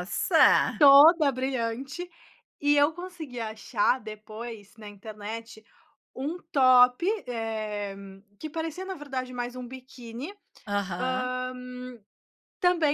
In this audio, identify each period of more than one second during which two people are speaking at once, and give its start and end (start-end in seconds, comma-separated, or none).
none